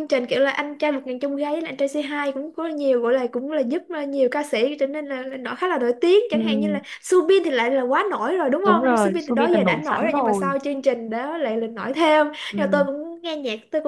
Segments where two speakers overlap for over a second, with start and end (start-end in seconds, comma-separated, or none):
8.6-10.6